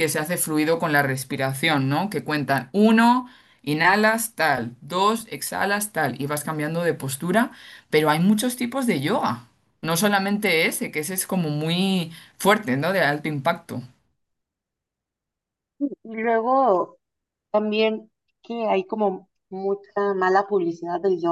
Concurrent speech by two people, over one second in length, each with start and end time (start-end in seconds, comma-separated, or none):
none